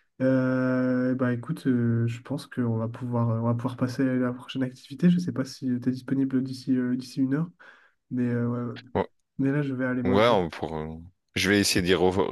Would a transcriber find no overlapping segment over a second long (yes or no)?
yes